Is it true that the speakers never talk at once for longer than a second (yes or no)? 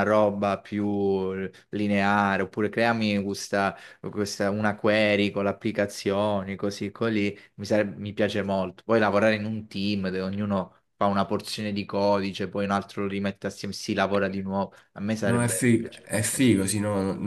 no